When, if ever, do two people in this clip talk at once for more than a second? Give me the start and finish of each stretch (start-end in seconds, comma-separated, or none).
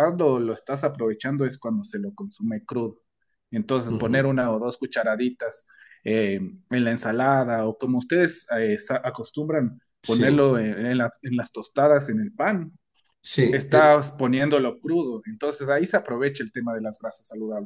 none